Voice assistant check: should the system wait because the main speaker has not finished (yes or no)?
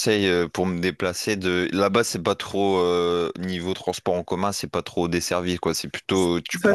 no